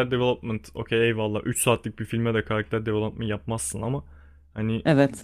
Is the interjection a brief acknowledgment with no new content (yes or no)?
yes